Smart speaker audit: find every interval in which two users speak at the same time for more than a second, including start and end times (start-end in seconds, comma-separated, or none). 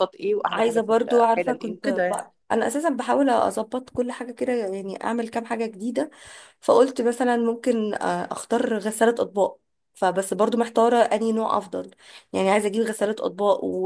0.5-2.1